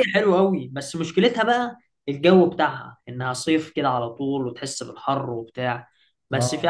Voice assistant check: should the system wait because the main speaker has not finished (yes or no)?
yes